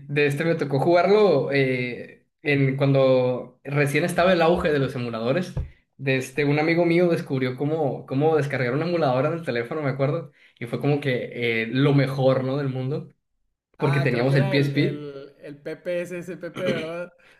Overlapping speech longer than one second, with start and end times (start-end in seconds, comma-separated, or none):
13.8-15.1